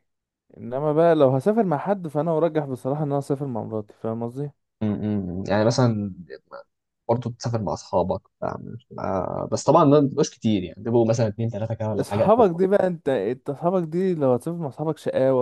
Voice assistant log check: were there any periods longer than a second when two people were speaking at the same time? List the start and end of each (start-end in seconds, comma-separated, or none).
none